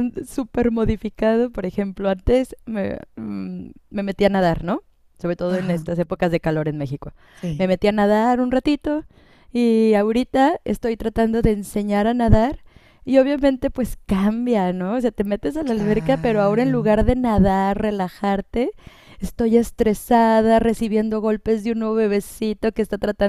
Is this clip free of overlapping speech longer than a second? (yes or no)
no